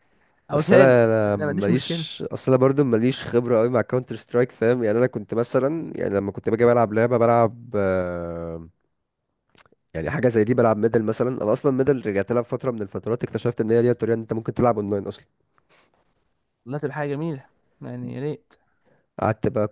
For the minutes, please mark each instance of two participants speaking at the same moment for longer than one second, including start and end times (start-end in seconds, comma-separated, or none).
0.5-2.0